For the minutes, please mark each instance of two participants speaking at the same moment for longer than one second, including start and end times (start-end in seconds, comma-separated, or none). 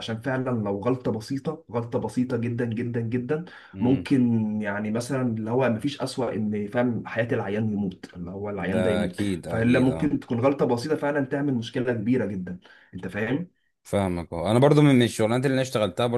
8.6-10.2